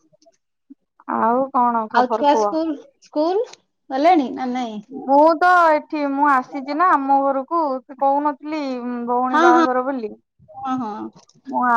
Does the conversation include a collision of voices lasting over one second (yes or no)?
no